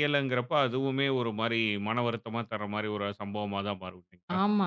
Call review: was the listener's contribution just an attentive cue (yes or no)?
no